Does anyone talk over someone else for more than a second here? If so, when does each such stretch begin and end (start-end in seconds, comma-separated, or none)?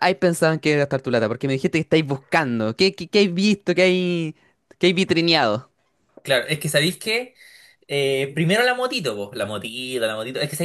none